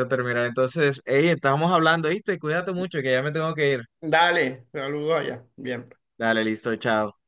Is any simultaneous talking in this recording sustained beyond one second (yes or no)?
no